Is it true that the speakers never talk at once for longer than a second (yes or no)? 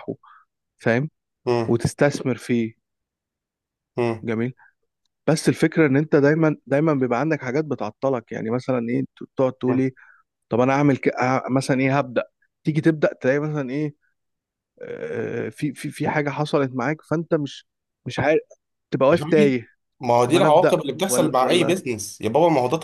no